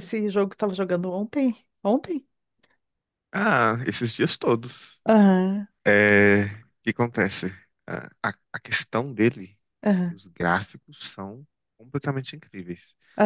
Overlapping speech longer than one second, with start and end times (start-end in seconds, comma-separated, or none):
none